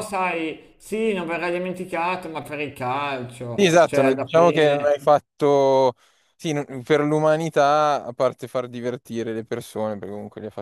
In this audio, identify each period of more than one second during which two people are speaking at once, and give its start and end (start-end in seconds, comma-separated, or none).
3.6-5.0